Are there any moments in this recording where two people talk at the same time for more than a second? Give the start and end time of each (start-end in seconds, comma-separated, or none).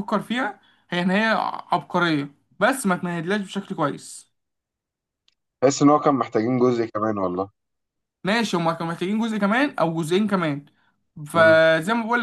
none